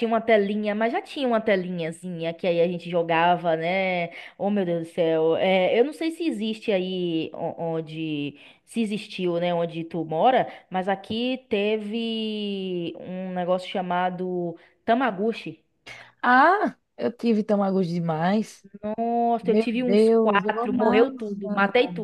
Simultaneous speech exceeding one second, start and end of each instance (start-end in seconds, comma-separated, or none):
19.4-21.1